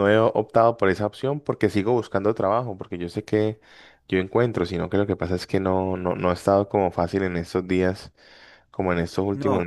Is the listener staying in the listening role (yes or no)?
yes